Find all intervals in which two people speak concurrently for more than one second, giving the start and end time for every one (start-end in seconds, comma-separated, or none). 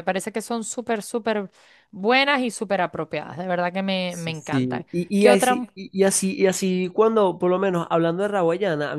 4.1-5.7